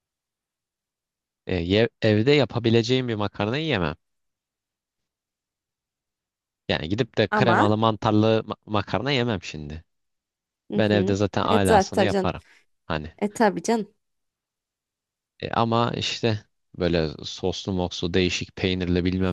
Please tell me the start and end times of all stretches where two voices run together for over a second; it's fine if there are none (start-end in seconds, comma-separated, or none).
10.8-12.3